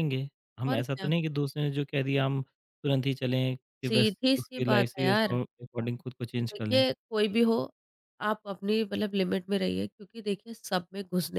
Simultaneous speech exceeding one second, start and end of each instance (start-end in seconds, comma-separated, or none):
3.9-5.4